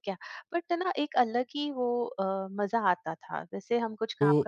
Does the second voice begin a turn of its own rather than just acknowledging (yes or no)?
yes